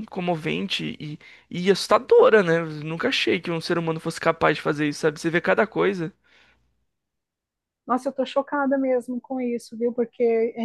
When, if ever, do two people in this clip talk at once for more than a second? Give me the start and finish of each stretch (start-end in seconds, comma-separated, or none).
none